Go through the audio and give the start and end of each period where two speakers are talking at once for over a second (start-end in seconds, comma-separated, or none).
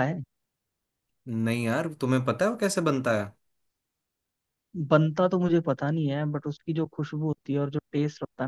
none